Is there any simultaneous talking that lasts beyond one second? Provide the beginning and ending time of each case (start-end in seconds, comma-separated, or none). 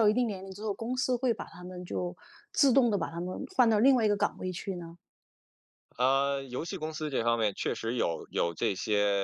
none